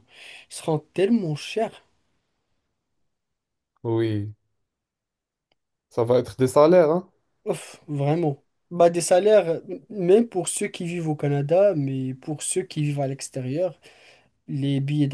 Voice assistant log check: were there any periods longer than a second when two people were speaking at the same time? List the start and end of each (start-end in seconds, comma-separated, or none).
none